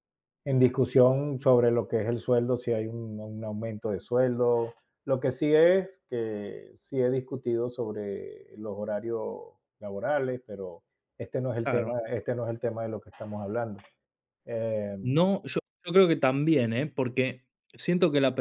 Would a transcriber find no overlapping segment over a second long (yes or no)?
yes